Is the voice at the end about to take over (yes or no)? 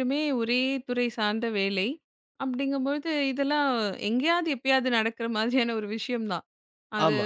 no